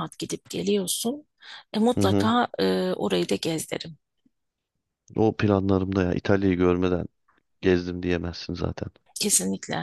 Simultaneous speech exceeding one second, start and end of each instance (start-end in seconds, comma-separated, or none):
none